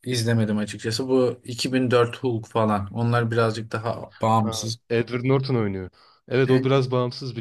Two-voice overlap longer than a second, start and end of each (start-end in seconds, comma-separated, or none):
none